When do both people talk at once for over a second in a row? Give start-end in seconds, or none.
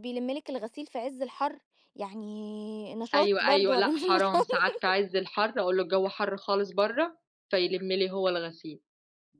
3.1-4.5